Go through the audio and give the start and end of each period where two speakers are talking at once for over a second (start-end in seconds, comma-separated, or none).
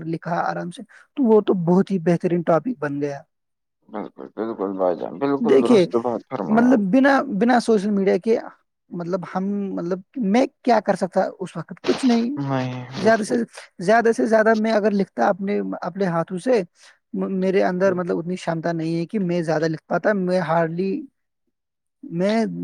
none